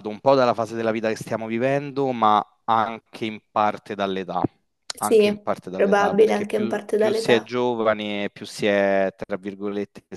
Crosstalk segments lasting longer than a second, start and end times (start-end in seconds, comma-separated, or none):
5.0-7.5